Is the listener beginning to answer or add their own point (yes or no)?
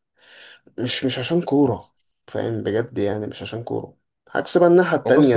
yes